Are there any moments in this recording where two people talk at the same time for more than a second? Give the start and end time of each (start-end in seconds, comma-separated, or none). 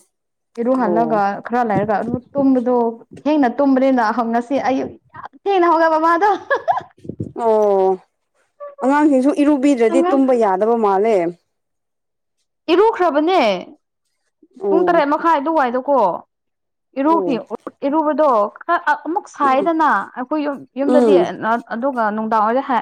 none